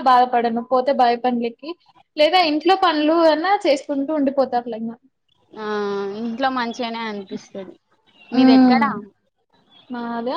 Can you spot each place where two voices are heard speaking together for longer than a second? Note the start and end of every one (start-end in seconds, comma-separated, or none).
none